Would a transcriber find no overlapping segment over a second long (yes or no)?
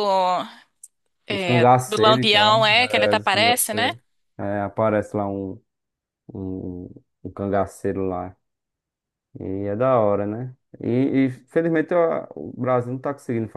no